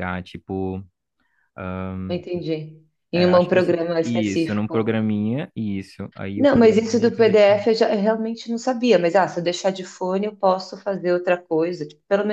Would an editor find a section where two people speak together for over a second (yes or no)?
yes